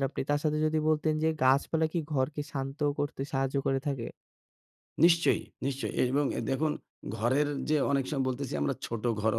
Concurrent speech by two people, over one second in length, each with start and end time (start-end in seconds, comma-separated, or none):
none